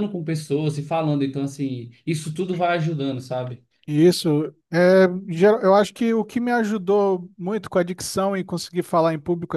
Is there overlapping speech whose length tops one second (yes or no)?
no